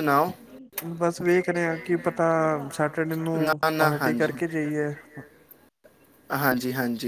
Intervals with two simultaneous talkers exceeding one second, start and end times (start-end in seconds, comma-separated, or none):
none